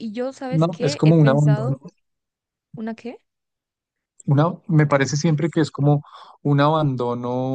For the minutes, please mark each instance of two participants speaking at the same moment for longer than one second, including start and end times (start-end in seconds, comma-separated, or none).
0.5-1.8